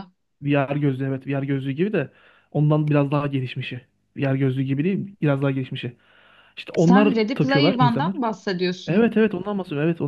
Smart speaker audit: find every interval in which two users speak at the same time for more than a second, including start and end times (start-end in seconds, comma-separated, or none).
6.8-8.2